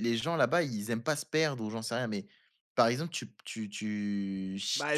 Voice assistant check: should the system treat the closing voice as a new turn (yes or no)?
yes